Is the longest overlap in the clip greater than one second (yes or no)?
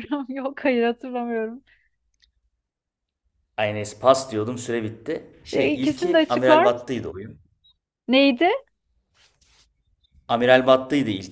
yes